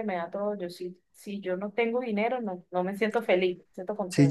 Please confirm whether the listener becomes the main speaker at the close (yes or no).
yes